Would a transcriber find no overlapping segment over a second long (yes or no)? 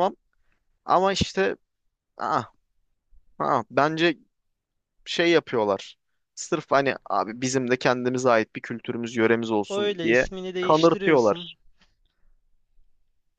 no